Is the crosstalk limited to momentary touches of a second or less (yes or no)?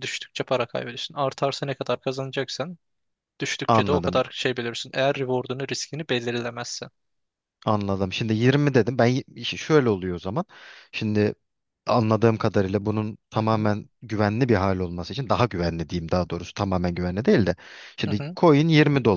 yes